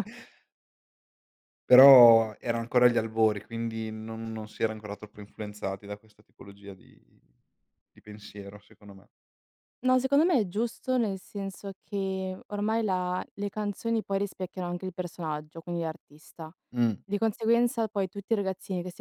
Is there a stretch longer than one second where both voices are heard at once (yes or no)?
no